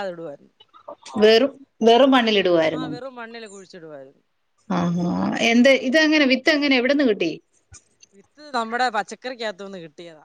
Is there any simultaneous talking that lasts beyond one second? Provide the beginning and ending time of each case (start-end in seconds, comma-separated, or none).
none